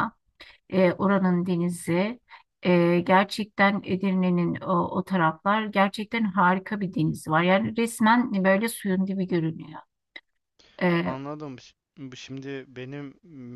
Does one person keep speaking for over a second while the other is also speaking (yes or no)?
no